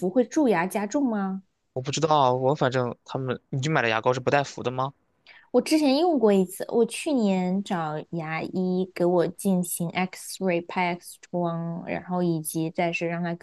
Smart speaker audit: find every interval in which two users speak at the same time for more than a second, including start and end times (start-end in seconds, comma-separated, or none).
none